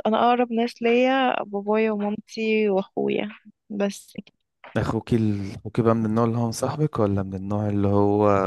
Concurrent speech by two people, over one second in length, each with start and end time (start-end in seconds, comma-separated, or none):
none